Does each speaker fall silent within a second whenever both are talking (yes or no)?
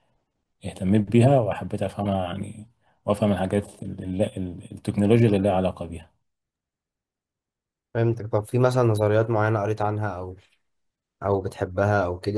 yes